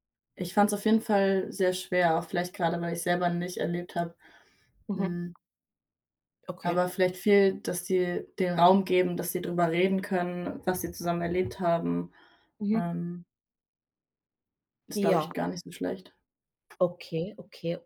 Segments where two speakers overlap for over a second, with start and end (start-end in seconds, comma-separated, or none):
none